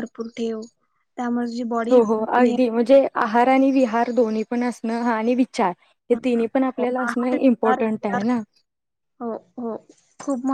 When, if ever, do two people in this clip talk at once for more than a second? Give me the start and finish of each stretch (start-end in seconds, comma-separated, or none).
6.1-7.8